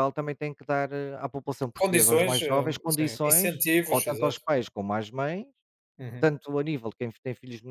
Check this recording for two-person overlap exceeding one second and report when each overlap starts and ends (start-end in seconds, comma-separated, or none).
1.8-4.4